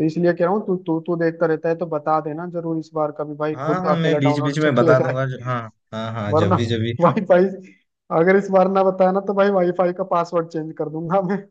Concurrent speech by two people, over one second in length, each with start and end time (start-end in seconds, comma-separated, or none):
3.5-5.1